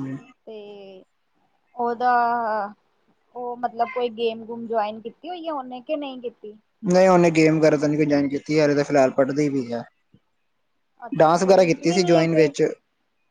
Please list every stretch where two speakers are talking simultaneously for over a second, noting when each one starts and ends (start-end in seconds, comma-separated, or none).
11.2-12.5